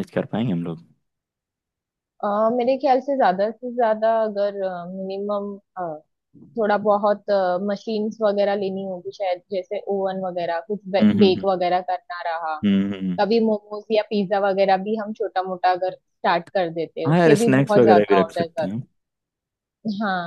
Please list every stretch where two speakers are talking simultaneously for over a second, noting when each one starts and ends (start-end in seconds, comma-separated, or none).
17.1-18.8